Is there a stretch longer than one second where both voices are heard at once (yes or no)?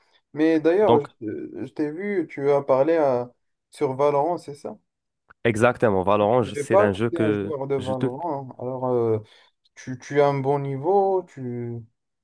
yes